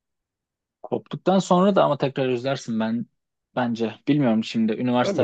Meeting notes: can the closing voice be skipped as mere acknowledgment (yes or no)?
no